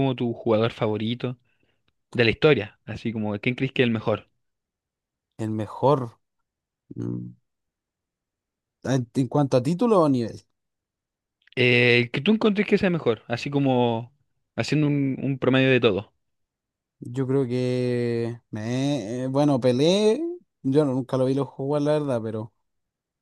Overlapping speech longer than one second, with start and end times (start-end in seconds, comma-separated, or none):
none